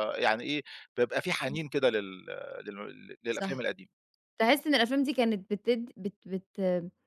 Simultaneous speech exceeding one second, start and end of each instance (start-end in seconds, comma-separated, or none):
none